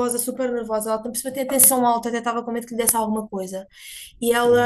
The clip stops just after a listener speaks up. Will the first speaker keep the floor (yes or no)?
yes